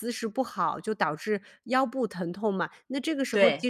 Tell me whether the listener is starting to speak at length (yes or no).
no